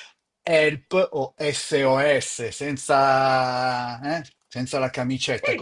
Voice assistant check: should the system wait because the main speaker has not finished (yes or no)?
no